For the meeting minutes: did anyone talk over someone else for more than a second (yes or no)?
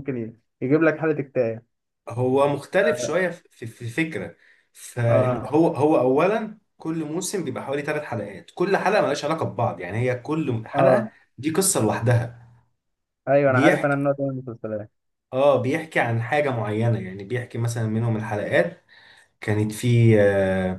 no